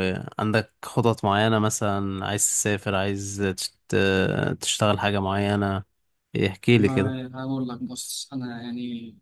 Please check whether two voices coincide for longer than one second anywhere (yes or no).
no